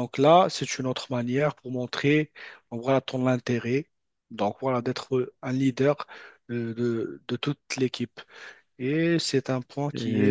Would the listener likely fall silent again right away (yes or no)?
no